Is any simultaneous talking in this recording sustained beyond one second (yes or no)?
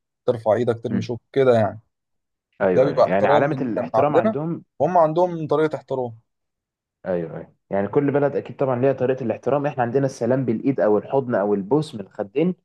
yes